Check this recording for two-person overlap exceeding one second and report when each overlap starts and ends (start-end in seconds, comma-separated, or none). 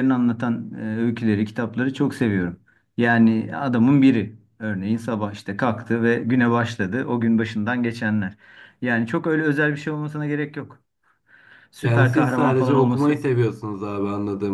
11.8-13.2